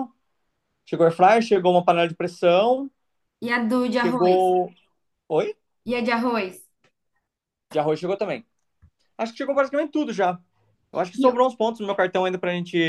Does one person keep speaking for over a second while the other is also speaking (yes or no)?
no